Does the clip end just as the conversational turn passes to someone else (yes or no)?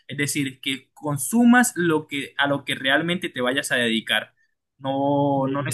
no